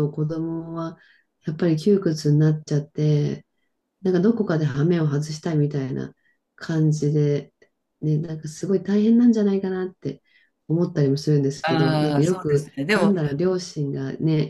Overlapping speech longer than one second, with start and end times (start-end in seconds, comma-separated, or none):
11.6-13.1